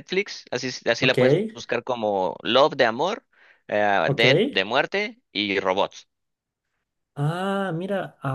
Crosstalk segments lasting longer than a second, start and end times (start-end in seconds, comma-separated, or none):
none